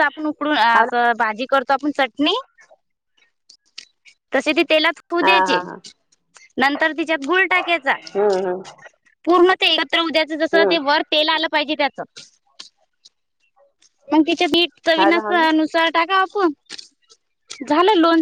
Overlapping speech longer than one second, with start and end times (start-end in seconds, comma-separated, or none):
none